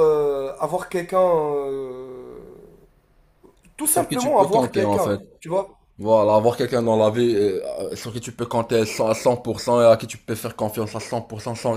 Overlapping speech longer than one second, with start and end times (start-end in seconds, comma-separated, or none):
3.9-5.2